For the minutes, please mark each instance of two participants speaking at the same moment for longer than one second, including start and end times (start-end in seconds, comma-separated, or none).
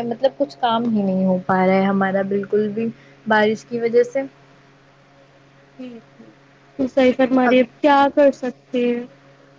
none